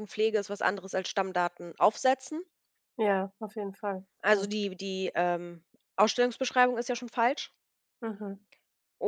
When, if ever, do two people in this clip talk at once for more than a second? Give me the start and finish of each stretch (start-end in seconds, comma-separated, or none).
none